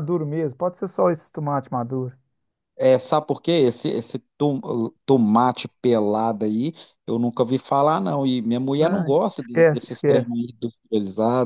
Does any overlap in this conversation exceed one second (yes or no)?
yes